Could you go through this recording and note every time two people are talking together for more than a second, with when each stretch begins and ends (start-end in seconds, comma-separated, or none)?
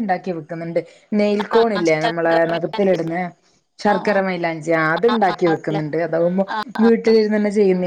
1.5-3.0